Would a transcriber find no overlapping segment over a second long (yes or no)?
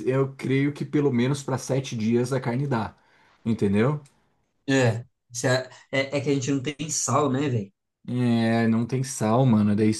yes